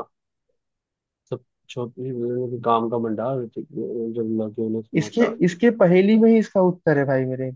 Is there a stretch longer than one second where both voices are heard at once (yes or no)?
no